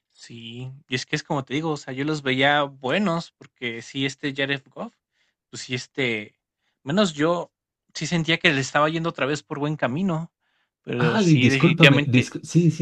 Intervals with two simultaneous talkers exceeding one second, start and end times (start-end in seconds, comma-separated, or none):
11.0-12.3